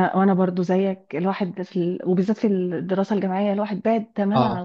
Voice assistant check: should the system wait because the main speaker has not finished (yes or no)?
yes